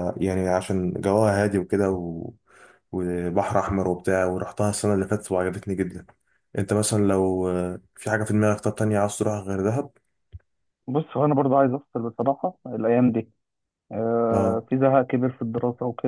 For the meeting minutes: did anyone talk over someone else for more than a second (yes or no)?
no